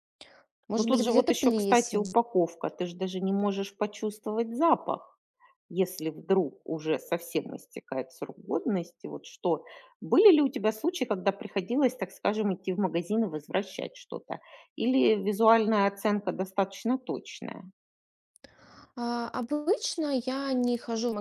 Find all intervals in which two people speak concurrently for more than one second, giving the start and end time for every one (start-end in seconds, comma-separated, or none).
0.8-2.0